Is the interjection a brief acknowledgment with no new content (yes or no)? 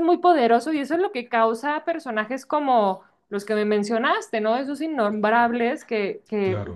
yes